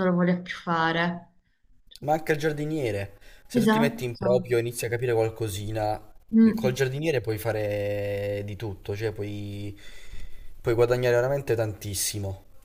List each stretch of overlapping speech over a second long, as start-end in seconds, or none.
none